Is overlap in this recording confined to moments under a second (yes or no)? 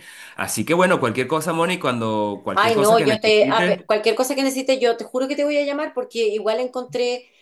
no